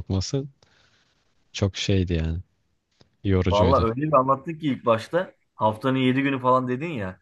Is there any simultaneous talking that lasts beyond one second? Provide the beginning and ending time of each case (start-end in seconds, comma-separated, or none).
none